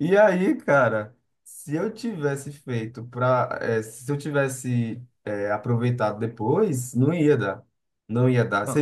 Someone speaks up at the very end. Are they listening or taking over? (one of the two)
listening